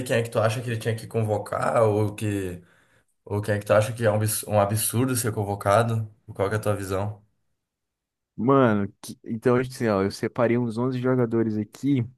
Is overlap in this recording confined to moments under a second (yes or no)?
yes